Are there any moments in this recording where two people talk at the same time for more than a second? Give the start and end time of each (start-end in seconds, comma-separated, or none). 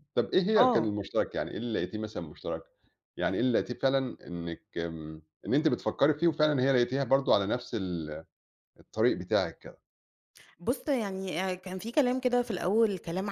none